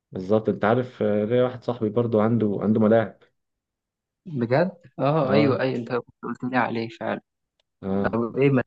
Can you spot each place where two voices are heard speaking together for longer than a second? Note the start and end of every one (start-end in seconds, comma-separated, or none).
none